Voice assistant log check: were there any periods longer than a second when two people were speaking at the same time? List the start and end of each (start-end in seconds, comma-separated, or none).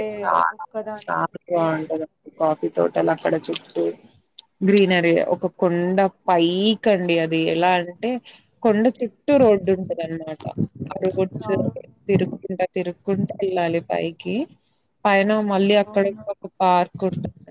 0.6-2.6